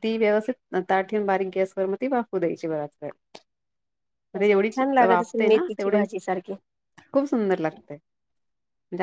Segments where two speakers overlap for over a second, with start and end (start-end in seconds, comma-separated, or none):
4.4-6.0